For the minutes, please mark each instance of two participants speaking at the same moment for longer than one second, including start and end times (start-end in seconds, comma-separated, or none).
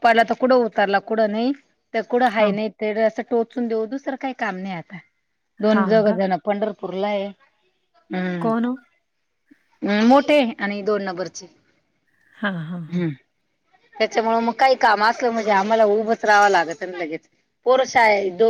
none